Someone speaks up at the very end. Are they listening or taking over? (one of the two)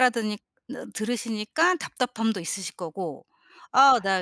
listening